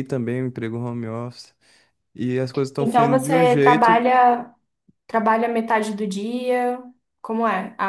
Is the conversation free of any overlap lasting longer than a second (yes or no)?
no